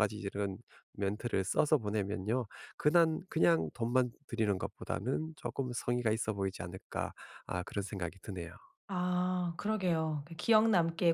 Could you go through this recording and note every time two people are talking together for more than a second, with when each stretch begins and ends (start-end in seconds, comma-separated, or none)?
none